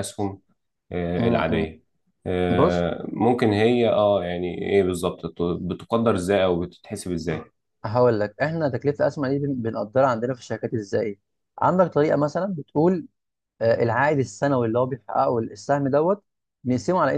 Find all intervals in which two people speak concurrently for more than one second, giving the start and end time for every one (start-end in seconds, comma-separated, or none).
none